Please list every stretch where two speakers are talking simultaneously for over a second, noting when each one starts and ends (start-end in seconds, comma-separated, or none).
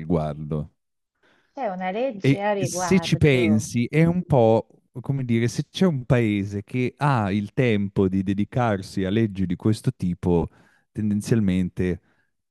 2.2-3.7